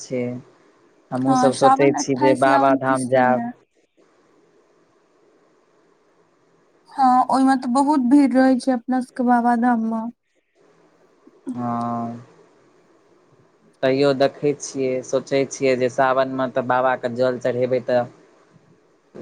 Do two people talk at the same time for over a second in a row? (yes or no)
yes